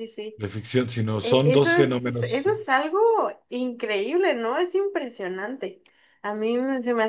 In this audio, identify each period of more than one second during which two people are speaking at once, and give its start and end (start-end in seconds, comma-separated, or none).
1.2-2.6